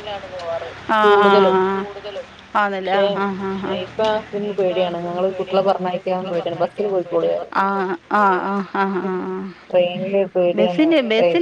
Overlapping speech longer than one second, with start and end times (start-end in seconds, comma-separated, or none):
4.5-7.5